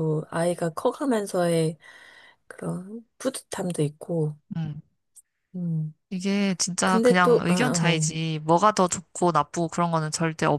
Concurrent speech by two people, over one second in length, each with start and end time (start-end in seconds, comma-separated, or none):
6.8-8.1